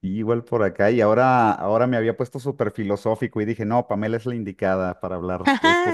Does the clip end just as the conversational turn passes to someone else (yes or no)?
yes